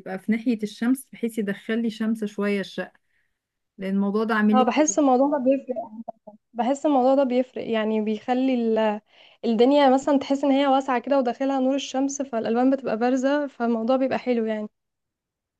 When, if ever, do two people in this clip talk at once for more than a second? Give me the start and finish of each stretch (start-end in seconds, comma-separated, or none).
none